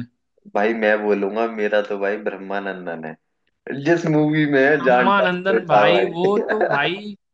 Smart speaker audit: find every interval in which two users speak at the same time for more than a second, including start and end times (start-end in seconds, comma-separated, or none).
4.8-6.8